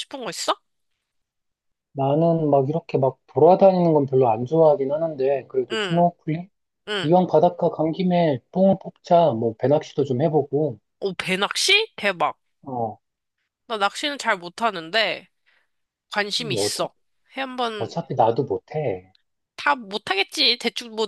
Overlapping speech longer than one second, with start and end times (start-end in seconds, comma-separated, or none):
none